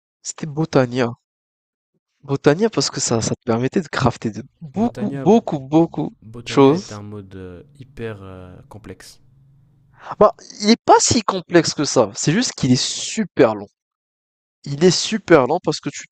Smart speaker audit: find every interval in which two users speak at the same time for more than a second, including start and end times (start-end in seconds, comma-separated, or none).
none